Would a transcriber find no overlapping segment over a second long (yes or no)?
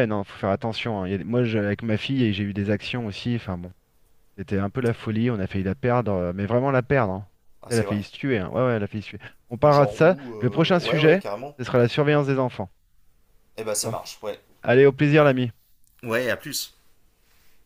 no